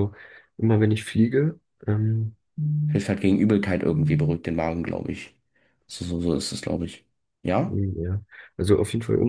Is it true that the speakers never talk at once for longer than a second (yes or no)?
yes